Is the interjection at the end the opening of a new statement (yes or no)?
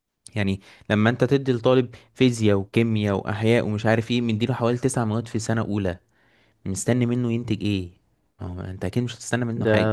yes